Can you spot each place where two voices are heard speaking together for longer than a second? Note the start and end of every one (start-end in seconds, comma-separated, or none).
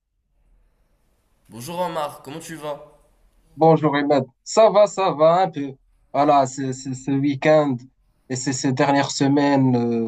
none